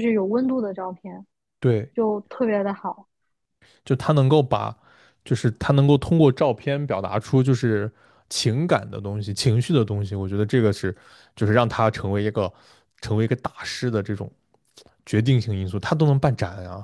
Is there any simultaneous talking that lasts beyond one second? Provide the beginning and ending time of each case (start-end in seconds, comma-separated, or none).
none